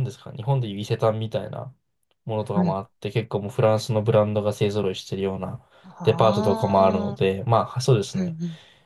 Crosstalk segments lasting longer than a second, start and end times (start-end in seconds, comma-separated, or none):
6.0-7.3